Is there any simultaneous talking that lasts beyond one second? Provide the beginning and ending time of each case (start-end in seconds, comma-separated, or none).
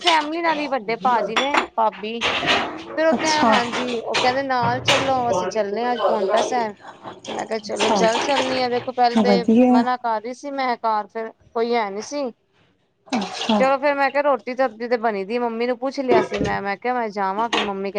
none